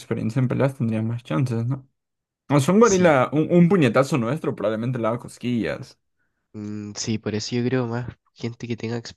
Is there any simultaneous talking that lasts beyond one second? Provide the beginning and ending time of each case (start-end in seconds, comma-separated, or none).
none